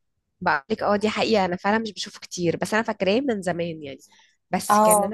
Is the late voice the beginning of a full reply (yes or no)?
no